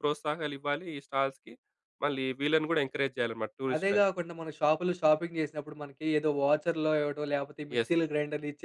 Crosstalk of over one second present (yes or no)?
no